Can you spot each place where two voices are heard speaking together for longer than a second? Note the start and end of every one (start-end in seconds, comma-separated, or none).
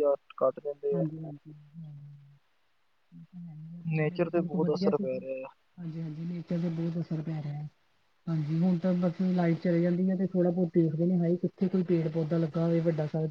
4.0-5.4